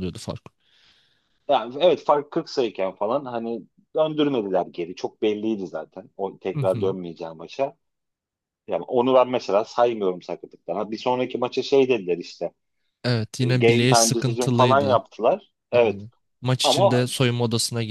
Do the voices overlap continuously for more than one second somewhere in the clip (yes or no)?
yes